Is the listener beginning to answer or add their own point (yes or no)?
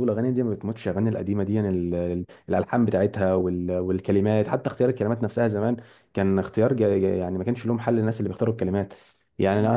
no